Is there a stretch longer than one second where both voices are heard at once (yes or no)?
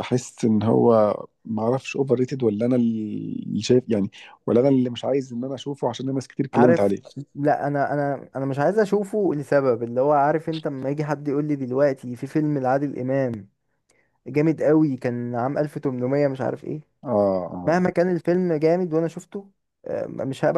no